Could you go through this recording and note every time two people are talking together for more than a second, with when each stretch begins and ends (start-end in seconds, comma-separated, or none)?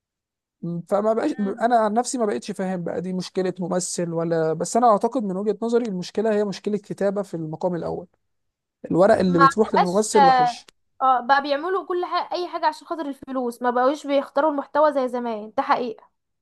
9.3-10.6